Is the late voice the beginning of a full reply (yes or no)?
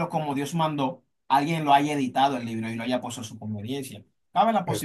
no